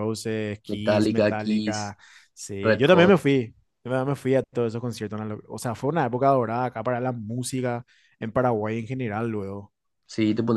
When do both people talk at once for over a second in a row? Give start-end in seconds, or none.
0.7-1.9